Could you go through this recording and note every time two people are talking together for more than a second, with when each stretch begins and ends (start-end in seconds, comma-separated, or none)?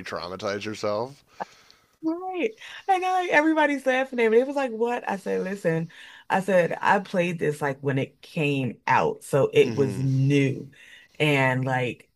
none